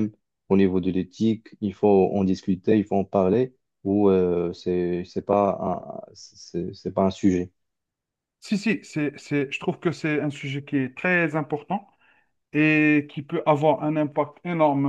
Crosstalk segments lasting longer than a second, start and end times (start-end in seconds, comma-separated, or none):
none